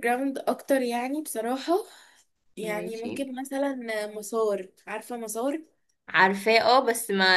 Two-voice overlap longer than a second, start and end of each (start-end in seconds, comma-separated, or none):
none